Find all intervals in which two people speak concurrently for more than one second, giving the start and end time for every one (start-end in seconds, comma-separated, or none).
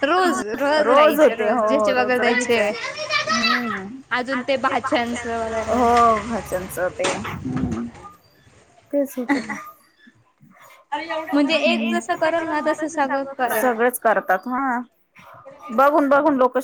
0.9-2.7